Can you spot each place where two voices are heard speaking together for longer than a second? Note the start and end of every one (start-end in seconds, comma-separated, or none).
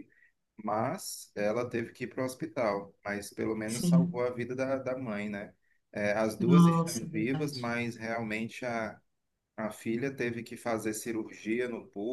6.4-7.7